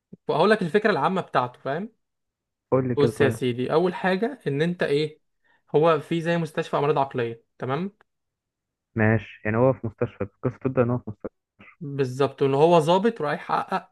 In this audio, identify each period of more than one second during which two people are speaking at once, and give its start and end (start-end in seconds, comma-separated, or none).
none